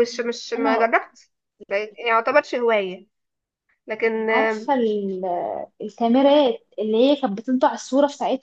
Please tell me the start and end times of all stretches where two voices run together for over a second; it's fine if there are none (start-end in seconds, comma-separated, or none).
none